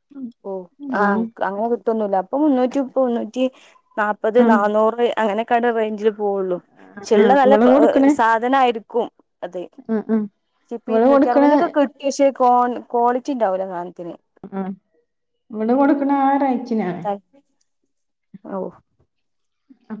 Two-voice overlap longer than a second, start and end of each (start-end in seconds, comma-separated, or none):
none